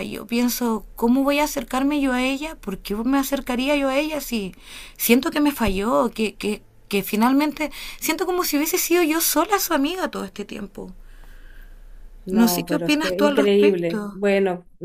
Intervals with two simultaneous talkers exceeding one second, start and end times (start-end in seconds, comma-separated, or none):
12.3-14.2